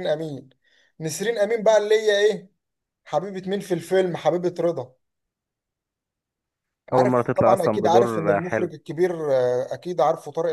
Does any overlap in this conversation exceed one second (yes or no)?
yes